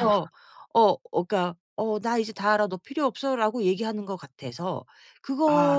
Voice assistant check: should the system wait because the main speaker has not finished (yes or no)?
yes